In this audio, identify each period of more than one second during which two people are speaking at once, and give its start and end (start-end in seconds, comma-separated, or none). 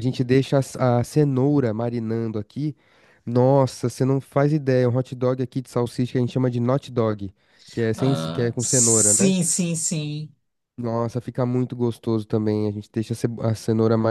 8.0-9.3